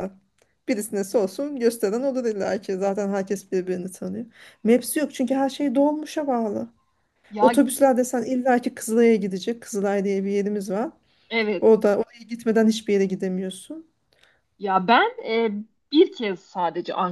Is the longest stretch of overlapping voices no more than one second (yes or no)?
yes